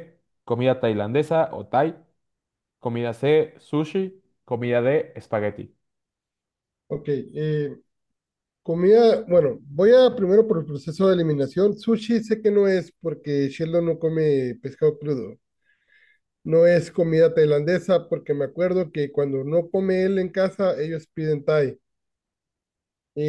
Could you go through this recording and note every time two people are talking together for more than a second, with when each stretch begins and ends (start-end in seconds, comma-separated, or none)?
none